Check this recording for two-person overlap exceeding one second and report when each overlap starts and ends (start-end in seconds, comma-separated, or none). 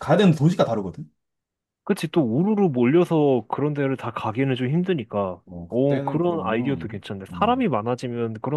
5.5-7.7